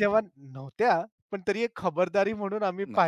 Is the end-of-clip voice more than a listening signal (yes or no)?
no